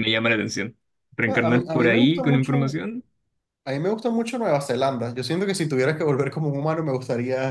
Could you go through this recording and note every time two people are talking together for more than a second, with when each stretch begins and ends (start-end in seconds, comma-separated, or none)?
1.3-2.8